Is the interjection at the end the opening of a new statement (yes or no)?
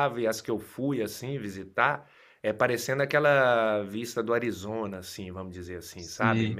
no